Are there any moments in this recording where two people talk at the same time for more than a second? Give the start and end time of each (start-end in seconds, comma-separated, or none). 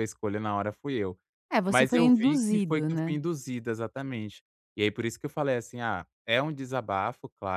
1.7-3.2